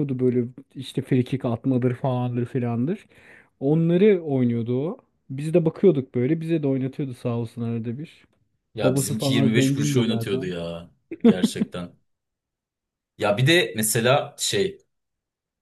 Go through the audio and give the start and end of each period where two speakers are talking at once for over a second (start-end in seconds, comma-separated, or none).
8.8-10.5